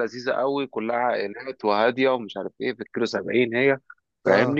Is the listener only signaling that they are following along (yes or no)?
yes